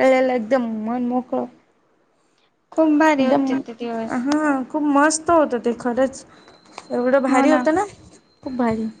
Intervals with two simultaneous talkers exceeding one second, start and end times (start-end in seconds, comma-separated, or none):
none